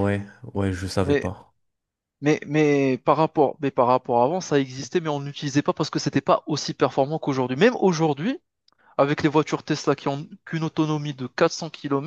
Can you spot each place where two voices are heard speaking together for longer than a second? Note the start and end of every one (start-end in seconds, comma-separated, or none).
none